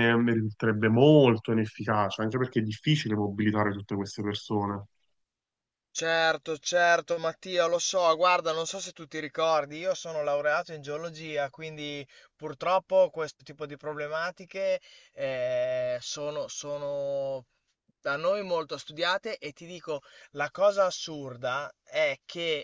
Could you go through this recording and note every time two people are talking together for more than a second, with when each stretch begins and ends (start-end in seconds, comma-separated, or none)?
none